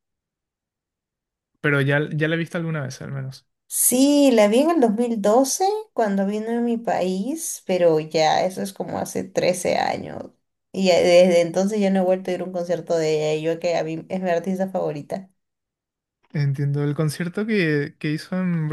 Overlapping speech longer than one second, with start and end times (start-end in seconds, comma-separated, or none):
none